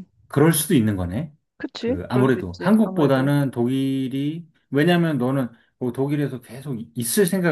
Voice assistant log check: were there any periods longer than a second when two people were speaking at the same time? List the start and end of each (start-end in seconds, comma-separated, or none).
1.8-3.3